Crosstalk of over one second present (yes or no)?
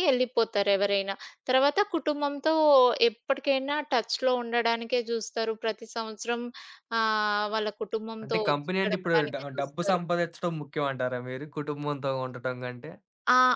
yes